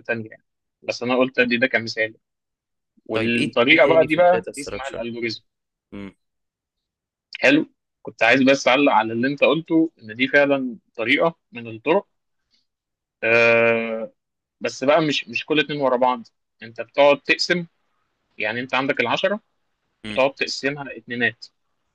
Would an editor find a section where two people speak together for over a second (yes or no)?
yes